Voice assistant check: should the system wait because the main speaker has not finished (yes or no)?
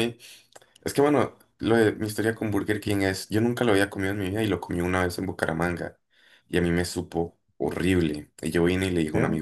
yes